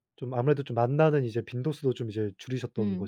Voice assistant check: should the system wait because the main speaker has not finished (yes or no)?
no